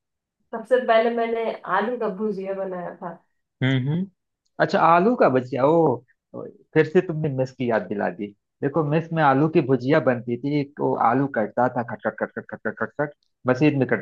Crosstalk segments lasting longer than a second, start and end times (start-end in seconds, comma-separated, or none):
none